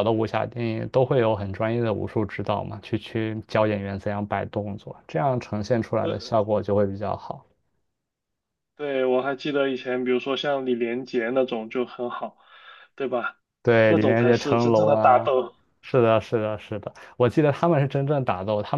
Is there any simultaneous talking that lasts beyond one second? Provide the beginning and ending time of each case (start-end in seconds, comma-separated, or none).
13.8-15.3